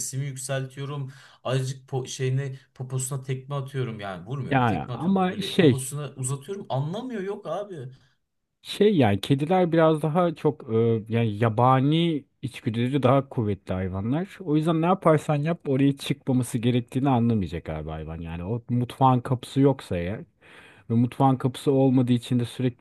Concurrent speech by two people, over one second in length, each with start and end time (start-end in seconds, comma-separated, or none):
4.5-5.9